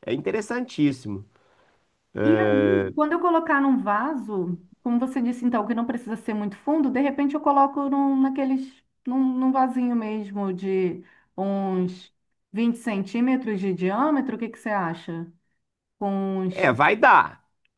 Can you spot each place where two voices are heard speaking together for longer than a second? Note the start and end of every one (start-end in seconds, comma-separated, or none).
none